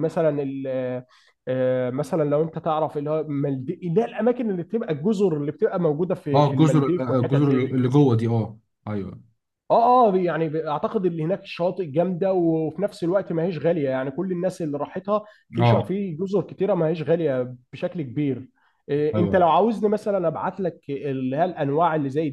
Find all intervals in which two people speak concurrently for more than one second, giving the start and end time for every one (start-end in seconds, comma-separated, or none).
6.3-7.7